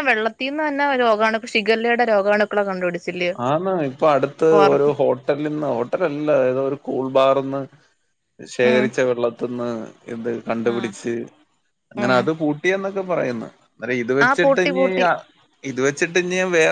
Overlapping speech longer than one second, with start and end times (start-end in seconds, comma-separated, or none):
none